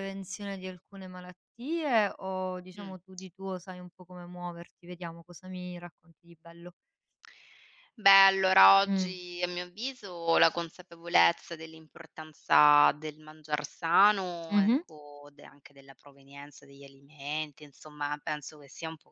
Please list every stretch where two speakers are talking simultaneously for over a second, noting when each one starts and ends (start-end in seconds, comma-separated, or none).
none